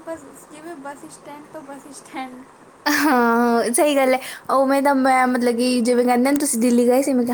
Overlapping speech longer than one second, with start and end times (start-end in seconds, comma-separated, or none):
none